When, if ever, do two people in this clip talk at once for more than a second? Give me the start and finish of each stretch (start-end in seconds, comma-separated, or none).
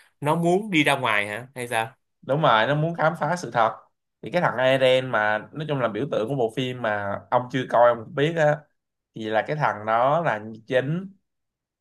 none